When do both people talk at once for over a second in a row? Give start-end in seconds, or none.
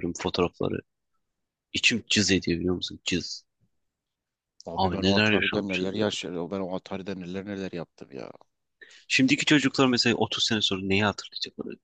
4.7-6.0